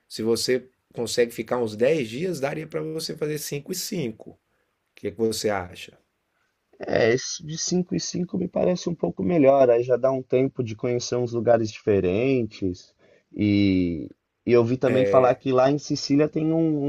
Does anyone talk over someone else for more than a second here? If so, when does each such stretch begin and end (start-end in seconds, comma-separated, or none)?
none